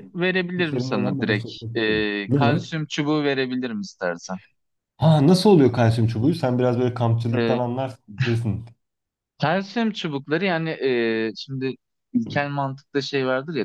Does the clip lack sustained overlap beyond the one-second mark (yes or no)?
no